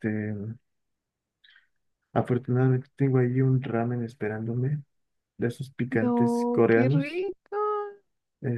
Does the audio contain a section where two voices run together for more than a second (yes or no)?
yes